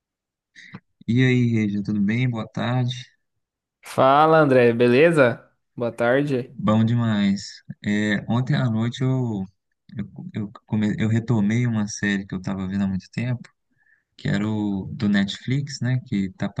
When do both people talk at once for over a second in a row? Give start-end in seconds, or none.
none